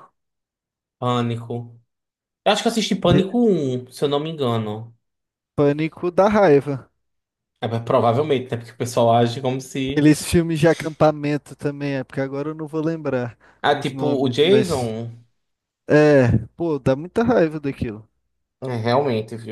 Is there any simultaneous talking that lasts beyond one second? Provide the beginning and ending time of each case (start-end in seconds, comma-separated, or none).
13.6-15.0